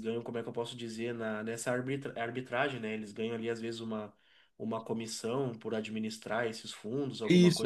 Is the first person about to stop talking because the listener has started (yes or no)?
yes